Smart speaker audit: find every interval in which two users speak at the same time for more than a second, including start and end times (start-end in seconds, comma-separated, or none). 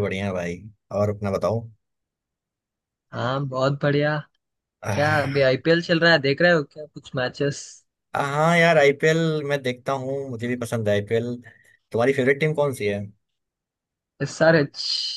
none